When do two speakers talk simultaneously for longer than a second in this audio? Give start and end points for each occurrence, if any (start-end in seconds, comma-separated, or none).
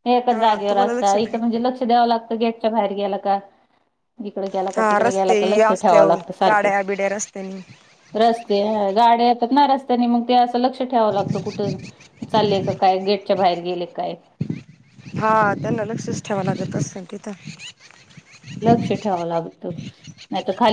4.8-6.8